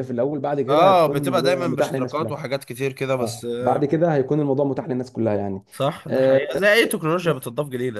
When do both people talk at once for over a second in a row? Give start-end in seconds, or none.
0.7-2.4